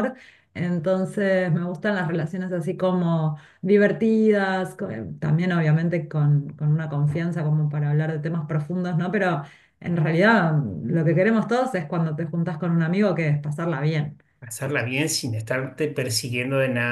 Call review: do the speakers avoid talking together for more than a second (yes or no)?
yes